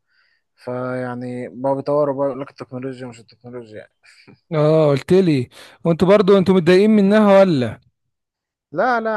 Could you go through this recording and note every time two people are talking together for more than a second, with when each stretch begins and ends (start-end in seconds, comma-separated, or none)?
none